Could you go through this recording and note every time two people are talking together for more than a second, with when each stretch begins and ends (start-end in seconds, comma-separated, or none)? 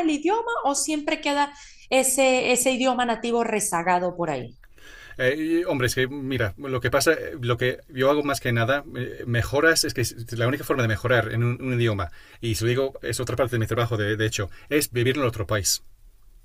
none